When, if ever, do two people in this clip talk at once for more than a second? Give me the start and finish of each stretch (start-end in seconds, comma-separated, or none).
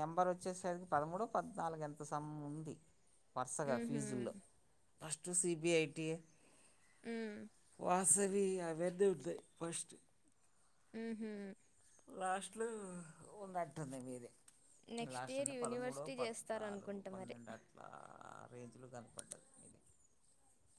15.1-17.4